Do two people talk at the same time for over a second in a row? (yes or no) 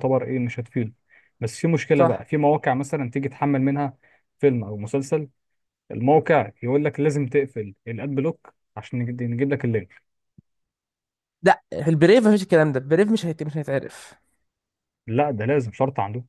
no